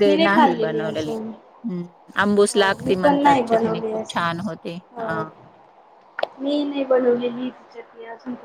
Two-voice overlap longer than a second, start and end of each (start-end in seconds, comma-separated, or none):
2.5-4.2